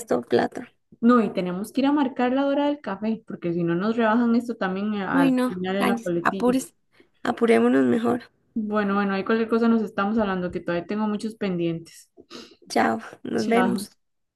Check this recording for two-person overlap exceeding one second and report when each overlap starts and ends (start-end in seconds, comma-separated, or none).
5.1-6.6